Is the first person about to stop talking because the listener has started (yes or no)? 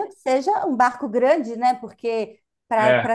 no